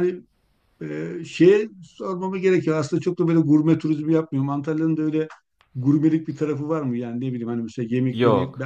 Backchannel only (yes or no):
yes